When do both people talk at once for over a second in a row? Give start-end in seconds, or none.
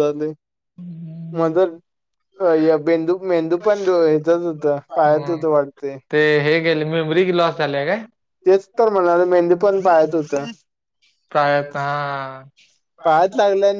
none